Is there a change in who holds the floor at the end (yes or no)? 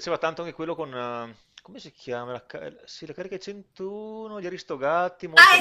yes